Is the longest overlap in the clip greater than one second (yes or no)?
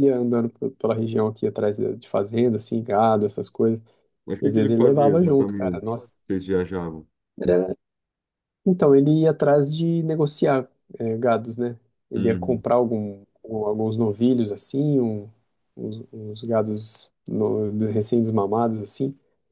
yes